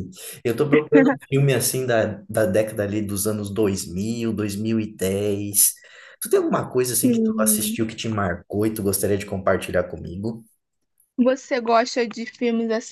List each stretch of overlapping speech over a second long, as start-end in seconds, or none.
none